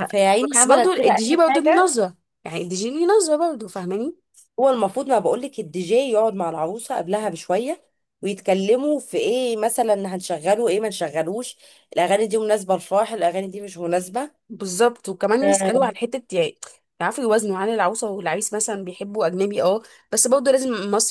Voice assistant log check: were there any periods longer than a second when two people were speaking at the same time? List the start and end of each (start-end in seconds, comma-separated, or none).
0.5-1.9